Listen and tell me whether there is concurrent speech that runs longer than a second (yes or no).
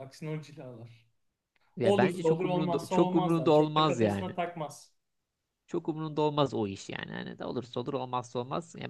yes